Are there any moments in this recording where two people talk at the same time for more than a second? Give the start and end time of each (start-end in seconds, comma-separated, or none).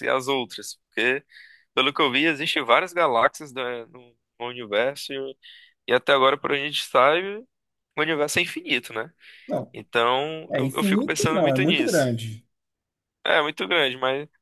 10.5-12.1